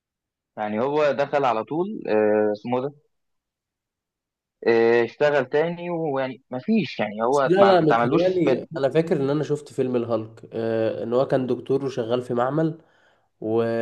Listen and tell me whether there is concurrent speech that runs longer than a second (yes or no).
yes